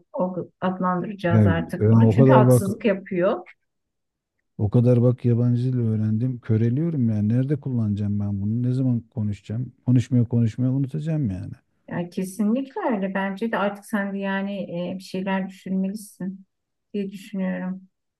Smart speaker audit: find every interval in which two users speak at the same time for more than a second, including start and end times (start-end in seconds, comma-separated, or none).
1.3-2.7